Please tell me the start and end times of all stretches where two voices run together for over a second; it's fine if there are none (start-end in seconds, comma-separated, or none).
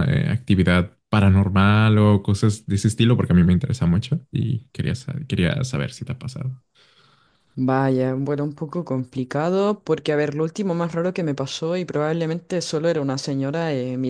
none